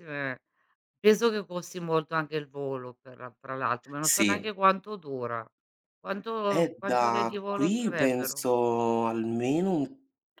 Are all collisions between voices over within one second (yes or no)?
no